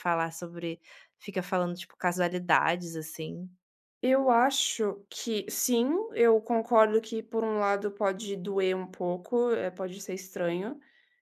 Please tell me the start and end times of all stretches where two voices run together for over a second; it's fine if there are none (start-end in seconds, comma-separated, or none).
none